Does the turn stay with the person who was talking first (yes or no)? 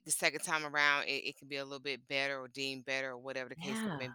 yes